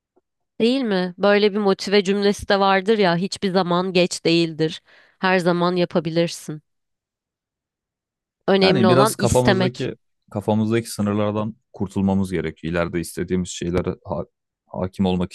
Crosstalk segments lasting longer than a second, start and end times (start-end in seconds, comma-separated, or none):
8.6-9.9